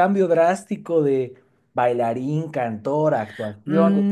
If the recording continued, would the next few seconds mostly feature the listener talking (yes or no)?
yes